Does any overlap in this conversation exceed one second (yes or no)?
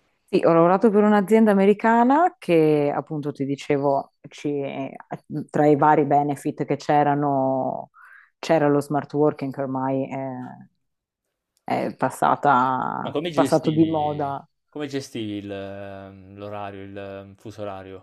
yes